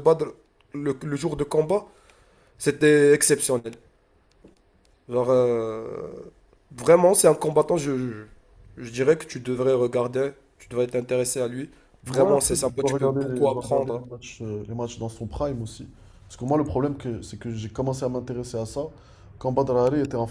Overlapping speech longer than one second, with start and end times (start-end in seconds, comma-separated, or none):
12.1-14.1